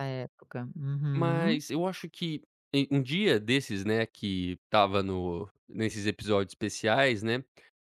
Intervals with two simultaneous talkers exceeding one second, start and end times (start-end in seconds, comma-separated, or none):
none